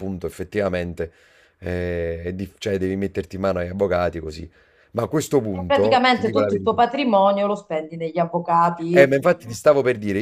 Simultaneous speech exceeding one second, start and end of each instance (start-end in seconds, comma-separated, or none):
5.5-6.8